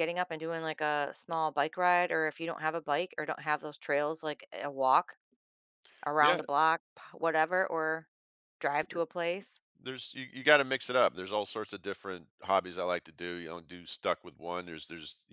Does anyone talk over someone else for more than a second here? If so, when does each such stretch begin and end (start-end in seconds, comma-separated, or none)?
none